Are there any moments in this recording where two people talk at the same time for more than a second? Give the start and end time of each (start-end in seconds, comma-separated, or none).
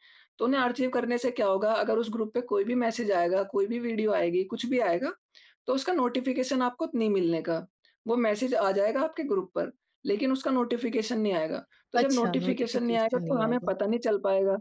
12.0-13.7